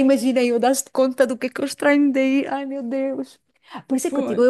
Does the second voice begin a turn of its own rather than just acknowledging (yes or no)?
no